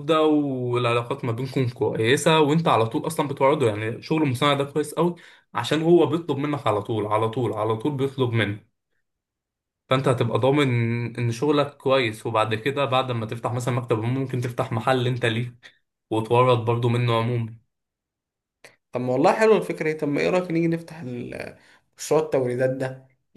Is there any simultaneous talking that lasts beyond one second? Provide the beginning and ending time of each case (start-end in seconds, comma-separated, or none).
none